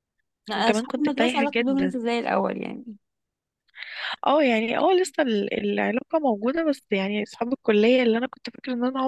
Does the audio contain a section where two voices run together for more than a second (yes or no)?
yes